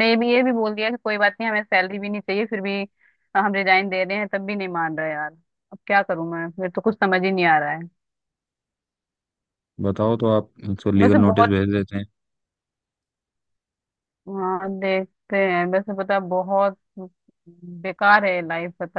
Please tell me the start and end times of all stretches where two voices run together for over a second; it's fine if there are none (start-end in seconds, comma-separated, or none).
none